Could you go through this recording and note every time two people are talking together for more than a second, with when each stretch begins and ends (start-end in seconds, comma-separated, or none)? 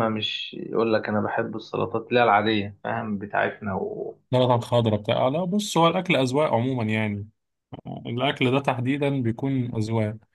none